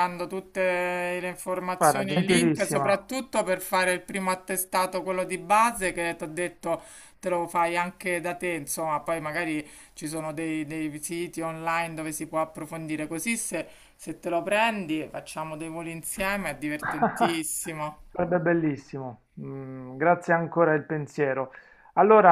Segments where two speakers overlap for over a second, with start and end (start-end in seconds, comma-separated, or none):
1.8-3.0